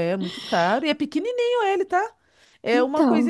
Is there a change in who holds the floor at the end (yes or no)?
no